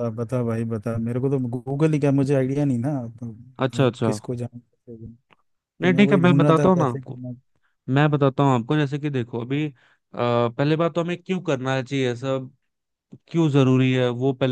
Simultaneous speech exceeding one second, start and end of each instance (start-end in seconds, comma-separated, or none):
5.8-7.2